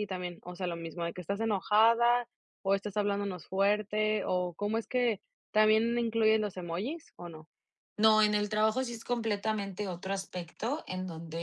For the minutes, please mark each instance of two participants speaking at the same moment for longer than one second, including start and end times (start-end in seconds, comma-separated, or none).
none